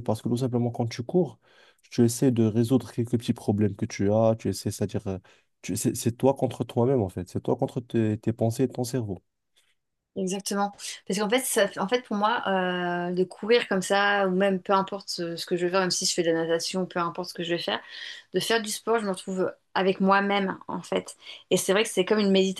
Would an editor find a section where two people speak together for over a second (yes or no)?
no